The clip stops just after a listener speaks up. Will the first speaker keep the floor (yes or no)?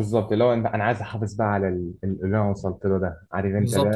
no